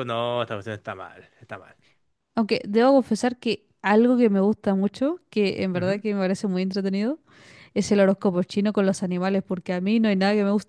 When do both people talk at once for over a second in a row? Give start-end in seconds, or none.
none